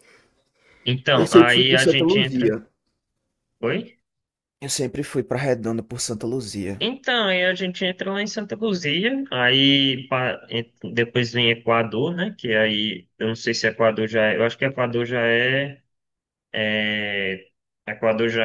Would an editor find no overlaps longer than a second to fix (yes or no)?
no